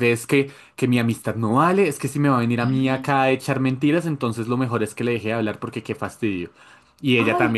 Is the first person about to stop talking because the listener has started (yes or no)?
no